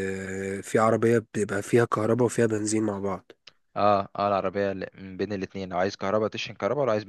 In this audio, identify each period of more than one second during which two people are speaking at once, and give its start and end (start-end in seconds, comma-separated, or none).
none